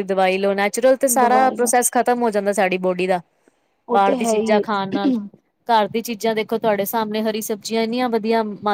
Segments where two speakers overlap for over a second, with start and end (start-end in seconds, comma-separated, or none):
3.9-5.1